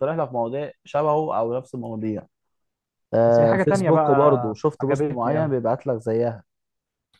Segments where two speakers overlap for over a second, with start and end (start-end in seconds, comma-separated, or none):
3.3-5.6